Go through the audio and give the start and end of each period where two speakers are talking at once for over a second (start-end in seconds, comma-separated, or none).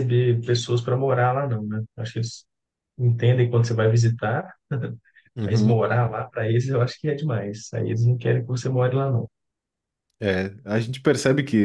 none